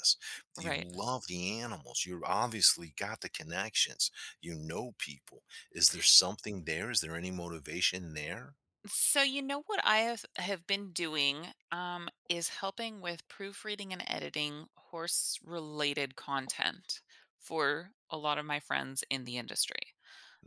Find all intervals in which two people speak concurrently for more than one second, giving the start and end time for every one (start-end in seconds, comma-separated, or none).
none